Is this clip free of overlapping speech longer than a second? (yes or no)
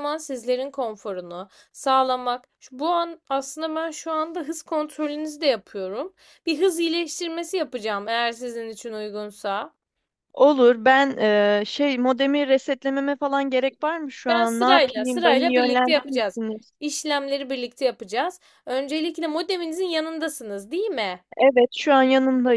no